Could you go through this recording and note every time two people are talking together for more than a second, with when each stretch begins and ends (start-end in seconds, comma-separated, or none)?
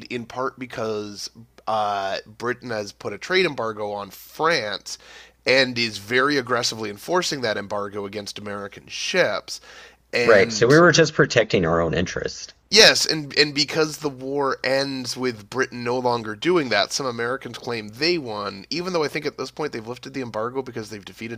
none